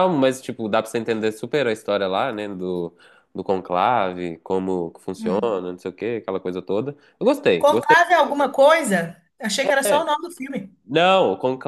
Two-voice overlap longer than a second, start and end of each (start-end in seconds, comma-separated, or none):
none